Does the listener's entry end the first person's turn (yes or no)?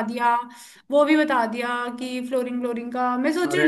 no